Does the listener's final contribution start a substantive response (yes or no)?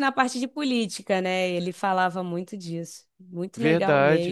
yes